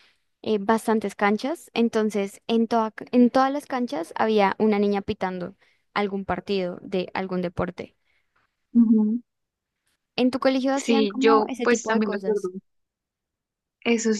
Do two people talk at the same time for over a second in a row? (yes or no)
yes